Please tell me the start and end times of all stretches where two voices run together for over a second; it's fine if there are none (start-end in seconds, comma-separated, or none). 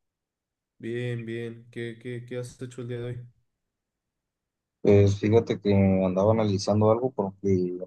none